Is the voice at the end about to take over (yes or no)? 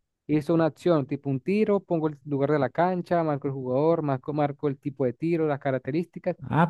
yes